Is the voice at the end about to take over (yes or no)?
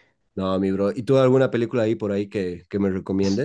yes